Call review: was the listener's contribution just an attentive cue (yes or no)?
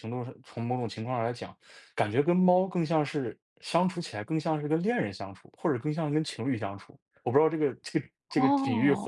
no